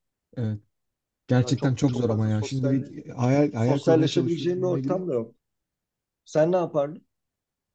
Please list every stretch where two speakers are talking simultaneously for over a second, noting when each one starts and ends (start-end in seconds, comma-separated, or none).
1.4-2.9, 3.5-5.0